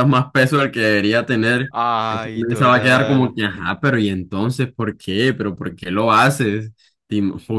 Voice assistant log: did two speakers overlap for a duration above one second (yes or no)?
yes